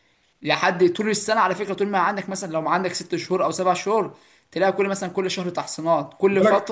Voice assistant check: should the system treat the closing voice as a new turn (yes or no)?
yes